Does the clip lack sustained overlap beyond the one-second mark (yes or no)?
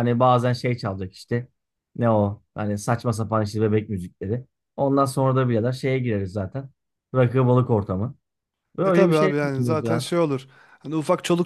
no